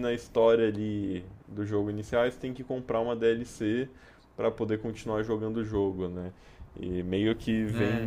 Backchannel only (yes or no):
yes